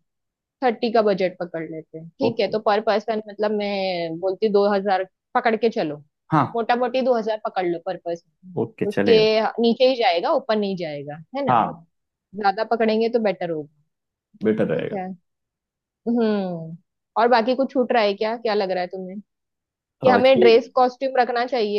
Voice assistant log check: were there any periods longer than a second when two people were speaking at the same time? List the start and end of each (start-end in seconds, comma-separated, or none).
none